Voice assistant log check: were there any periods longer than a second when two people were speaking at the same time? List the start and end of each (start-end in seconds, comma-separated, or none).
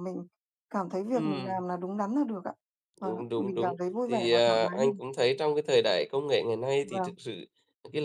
3.0-5.0